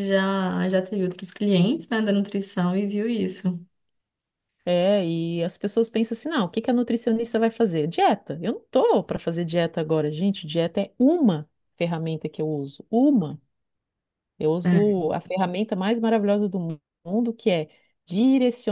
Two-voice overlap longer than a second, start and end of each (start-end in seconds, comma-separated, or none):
none